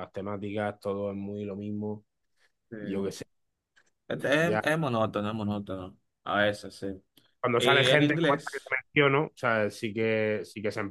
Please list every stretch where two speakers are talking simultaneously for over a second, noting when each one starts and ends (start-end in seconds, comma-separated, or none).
7.6-8.8